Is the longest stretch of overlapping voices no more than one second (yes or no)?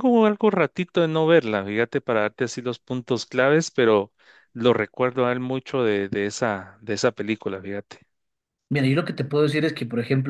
yes